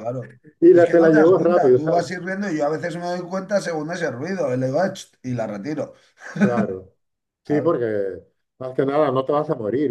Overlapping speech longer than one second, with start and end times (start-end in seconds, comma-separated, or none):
0.7-2.1